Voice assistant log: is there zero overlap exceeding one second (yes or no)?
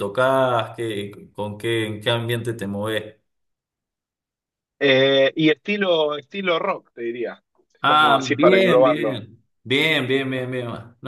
no